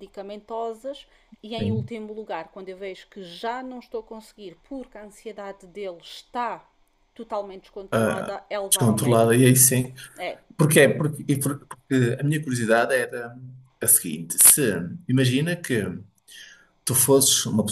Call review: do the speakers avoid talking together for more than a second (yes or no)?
no